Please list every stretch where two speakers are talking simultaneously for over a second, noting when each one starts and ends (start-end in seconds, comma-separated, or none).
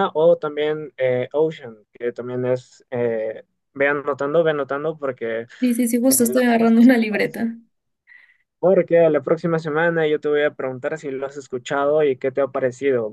6.1-7.4